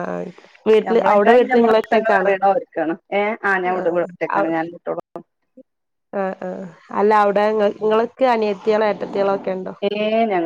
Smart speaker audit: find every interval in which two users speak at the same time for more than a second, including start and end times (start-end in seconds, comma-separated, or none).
0.9-2.3